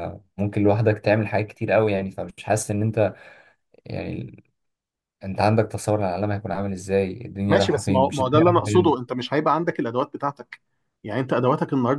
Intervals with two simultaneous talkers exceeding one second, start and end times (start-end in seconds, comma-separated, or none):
7.5-9.0